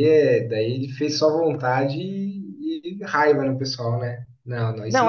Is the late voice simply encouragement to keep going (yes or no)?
no